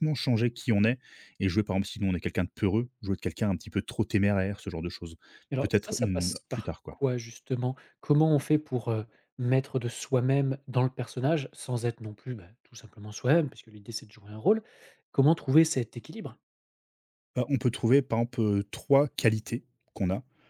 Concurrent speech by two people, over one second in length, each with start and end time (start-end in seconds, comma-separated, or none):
5.6-7.0